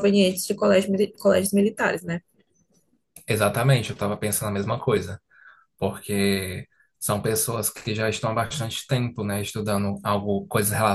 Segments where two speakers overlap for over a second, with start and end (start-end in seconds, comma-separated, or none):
none